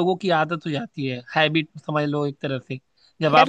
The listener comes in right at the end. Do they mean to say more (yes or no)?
yes